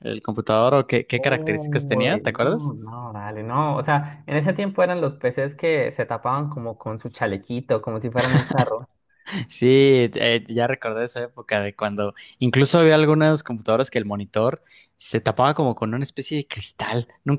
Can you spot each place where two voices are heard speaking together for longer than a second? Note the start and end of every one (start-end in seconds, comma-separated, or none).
1.1-2.8